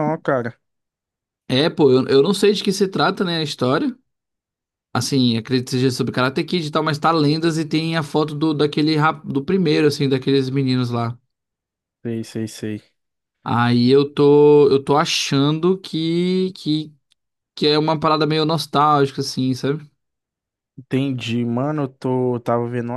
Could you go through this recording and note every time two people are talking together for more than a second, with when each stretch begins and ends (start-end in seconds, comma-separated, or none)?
none